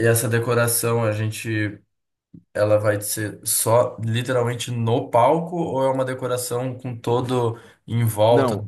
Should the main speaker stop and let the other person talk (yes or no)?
yes